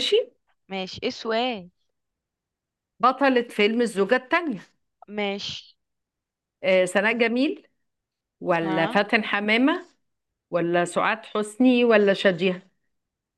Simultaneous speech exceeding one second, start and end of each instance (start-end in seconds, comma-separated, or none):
none